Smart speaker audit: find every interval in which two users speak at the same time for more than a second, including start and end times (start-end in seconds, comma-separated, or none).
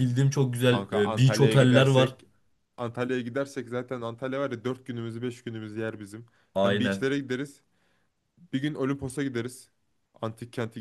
0.6-2.2